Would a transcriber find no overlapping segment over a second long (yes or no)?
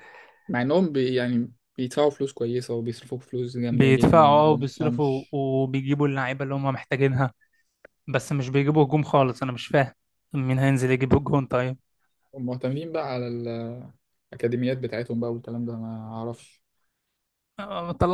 no